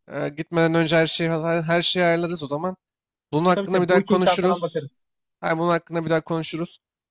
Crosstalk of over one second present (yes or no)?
yes